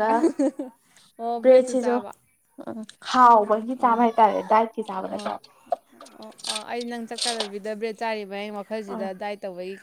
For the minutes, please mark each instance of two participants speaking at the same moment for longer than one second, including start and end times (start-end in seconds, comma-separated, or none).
none